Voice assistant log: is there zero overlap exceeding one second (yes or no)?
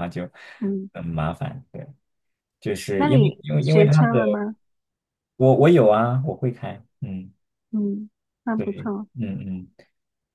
no